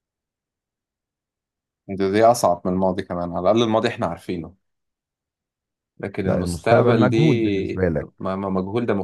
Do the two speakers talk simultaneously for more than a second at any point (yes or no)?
yes